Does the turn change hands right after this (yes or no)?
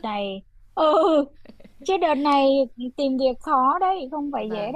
yes